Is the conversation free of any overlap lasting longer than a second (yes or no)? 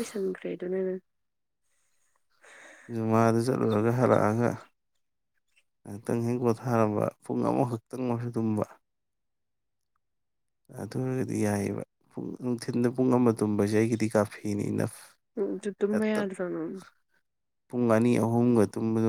yes